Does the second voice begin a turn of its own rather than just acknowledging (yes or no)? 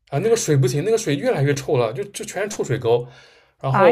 no